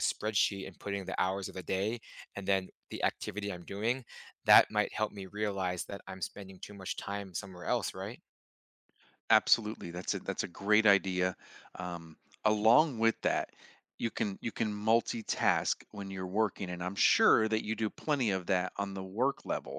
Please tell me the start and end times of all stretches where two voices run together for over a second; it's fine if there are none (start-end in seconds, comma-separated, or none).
none